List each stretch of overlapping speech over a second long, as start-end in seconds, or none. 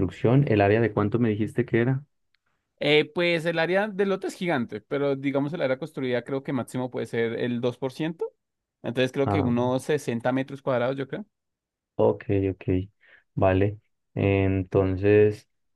none